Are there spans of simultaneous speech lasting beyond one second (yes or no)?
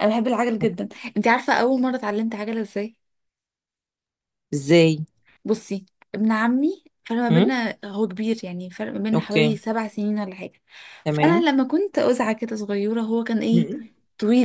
no